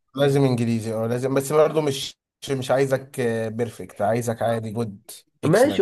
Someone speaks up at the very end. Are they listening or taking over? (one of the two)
taking over